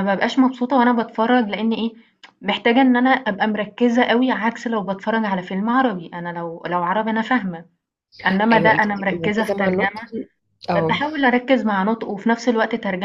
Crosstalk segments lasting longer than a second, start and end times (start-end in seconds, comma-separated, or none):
8.5-10.0